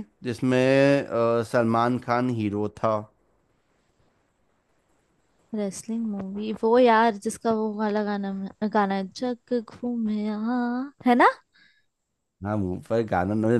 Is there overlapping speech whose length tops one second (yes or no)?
no